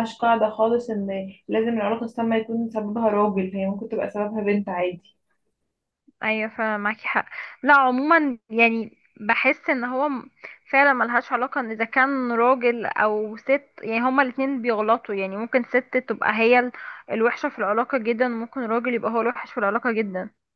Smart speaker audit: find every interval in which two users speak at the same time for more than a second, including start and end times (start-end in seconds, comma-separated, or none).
none